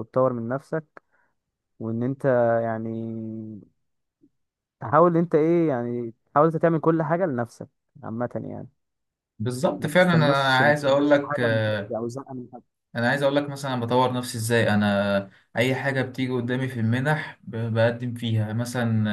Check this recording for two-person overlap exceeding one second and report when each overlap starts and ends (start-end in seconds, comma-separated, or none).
9.8-12.0